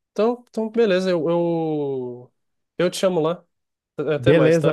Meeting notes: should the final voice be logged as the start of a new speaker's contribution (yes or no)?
yes